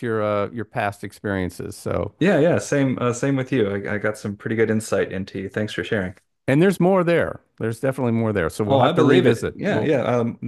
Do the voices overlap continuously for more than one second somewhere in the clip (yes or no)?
yes